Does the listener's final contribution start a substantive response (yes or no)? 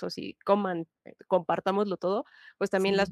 no